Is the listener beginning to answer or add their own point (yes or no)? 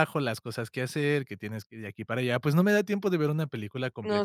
yes